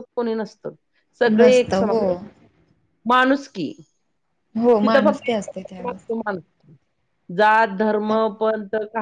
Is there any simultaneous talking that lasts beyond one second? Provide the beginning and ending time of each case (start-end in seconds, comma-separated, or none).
4.8-6.0